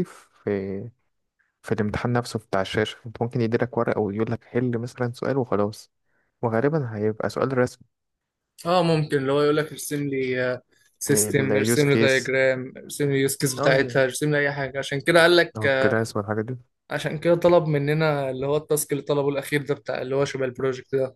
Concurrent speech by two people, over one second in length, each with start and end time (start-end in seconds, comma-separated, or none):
11.1-12.3